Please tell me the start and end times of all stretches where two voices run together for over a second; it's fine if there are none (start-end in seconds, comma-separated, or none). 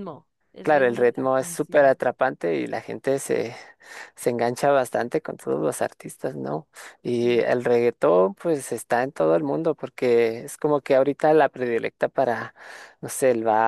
0.6-2.0